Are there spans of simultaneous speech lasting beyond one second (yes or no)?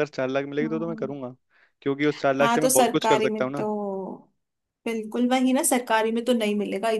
yes